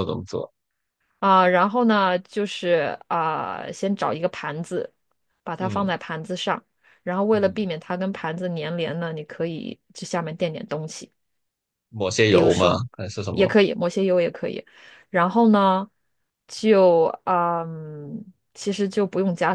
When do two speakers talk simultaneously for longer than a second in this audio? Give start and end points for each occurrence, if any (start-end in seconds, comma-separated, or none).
none